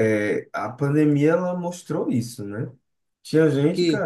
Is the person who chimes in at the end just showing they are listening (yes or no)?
yes